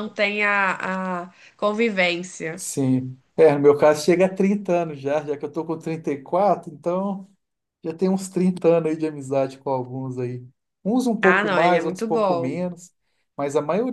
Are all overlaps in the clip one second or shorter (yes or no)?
no